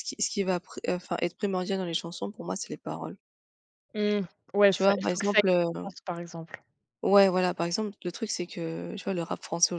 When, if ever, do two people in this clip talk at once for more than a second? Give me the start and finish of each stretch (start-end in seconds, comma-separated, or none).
4.7-5.9